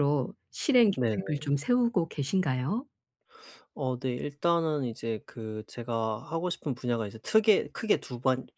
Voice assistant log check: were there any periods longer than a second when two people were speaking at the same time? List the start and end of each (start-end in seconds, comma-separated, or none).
none